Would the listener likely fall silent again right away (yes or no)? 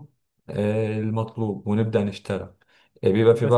no